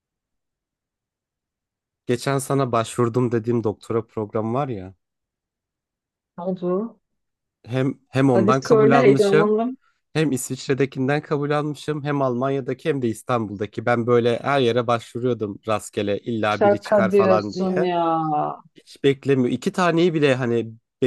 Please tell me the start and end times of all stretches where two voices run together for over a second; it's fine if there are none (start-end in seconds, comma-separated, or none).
8.3-9.5, 16.5-17.9